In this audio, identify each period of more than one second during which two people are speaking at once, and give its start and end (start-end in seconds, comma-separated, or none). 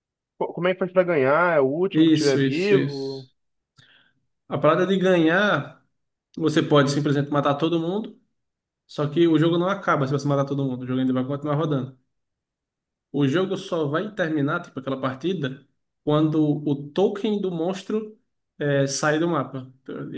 1.9-3.3